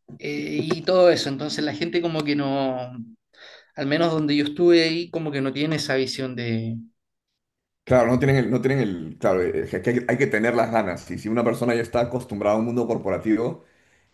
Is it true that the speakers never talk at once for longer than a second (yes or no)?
yes